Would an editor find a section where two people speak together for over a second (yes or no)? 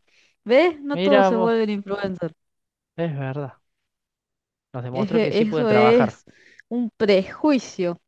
yes